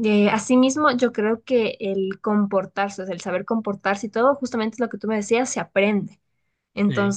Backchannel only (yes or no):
yes